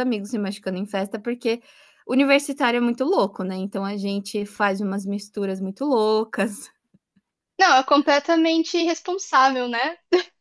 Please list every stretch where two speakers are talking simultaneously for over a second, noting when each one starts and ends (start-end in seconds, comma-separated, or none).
none